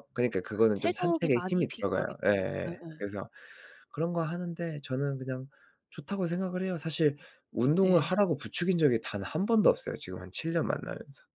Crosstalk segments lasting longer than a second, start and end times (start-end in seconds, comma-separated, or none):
0.7-3.0